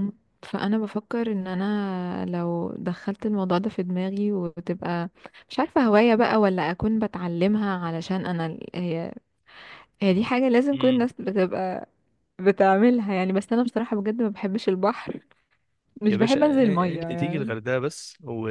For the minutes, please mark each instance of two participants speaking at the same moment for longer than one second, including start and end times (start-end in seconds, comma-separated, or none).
16.1-17.5